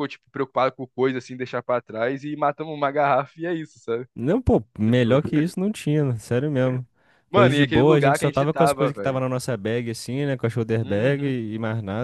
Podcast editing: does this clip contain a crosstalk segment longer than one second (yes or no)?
yes